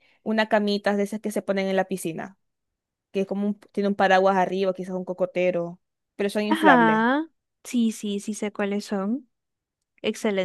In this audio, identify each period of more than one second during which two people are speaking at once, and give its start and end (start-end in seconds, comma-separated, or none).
none